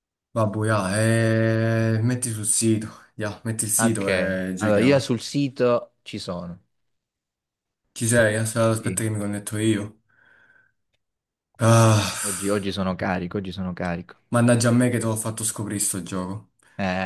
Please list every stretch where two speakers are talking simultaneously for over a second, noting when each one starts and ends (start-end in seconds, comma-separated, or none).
3.7-5.1